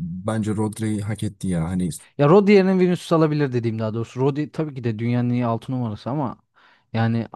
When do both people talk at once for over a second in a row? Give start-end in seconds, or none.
none